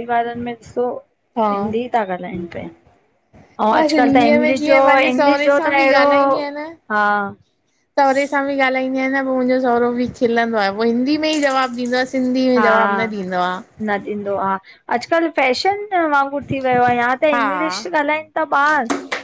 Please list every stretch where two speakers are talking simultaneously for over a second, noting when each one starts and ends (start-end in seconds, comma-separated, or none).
3.7-6.0